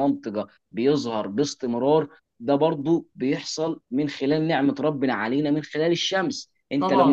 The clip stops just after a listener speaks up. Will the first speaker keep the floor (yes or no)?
yes